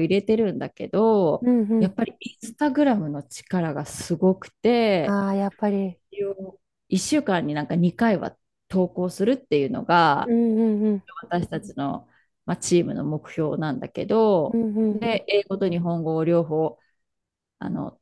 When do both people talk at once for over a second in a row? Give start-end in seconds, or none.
none